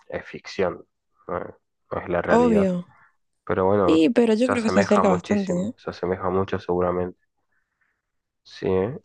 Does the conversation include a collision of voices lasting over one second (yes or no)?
yes